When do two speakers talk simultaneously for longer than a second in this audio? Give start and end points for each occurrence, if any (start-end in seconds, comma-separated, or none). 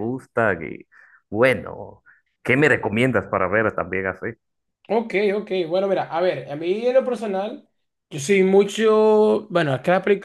none